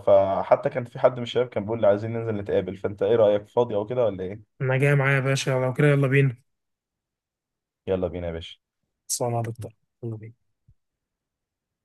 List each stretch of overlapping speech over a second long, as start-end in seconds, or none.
none